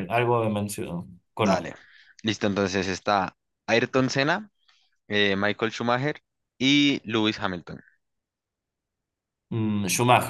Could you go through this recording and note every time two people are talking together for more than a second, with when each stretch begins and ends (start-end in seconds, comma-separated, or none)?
none